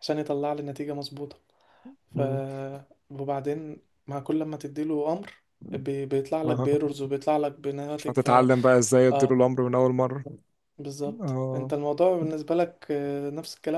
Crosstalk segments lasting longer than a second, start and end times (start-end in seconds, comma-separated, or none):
none